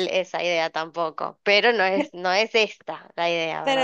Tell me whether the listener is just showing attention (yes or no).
no